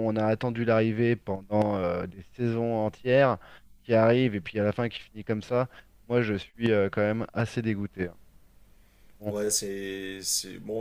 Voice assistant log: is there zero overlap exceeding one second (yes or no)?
yes